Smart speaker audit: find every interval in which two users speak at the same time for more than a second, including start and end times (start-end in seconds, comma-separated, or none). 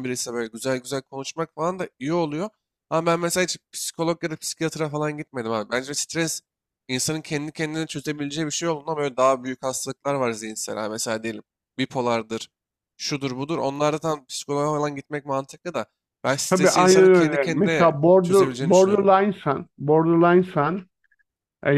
16.5-19.1